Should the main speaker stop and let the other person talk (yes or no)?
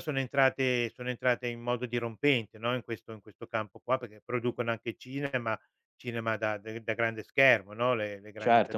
yes